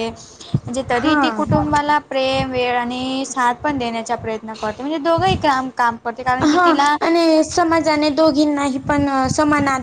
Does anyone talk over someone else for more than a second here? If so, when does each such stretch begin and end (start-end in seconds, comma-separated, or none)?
none